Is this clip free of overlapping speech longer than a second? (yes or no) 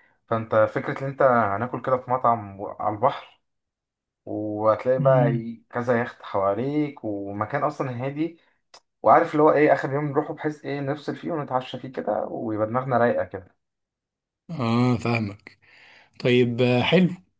yes